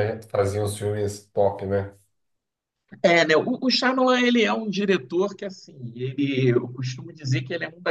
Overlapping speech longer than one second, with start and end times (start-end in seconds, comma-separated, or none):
none